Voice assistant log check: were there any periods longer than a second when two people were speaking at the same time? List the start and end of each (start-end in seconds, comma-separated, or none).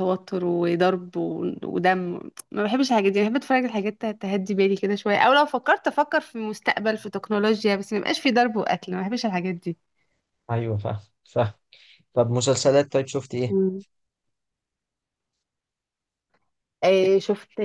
none